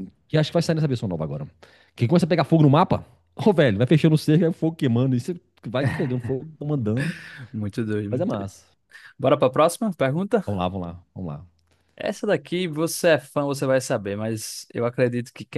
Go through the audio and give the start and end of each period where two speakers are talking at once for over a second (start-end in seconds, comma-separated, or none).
none